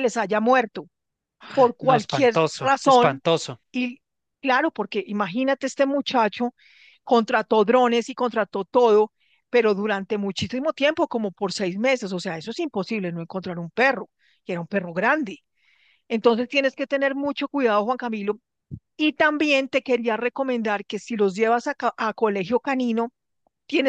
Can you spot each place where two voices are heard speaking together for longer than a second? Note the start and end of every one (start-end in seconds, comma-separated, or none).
1.8-3.2